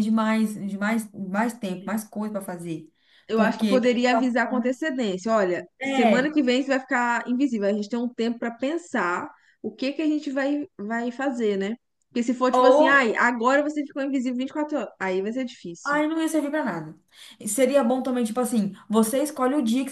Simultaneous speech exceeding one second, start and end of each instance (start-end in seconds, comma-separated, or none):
3.3-4.9